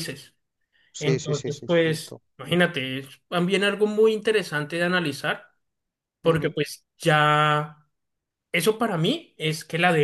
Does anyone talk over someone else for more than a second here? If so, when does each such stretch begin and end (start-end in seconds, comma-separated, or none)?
1.0-2.2